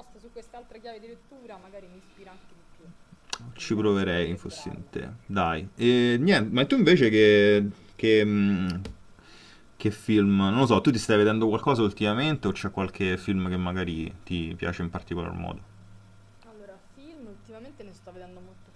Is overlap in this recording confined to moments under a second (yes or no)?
no